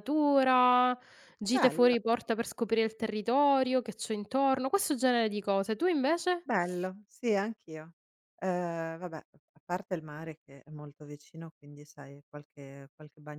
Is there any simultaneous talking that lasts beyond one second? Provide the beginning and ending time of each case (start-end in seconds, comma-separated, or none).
none